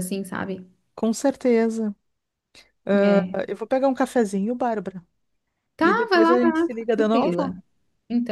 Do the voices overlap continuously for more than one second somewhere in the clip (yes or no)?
yes